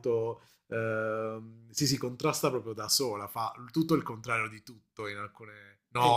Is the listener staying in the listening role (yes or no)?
no